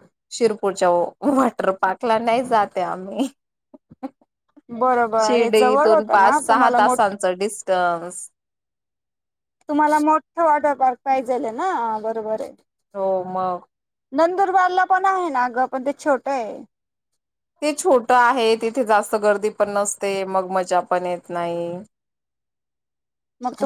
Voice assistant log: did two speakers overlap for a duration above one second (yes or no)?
yes